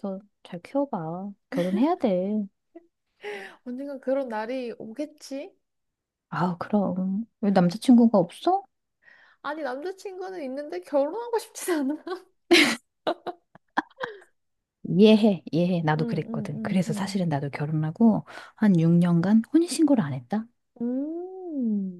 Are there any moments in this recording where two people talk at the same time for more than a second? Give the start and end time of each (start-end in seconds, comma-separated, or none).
16.0-17.3